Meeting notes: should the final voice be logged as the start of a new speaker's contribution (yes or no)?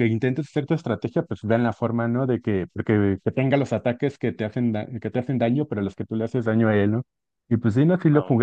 no